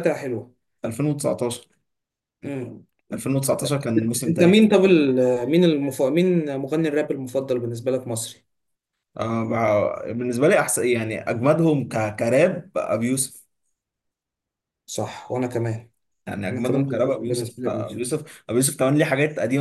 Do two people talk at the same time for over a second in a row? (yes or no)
yes